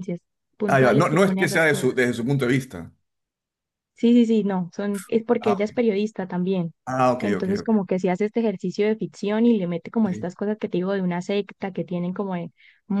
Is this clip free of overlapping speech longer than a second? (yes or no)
no